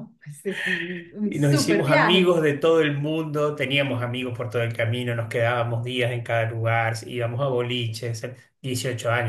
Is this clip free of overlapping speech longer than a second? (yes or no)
no